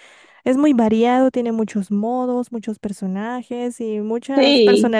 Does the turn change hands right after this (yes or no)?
yes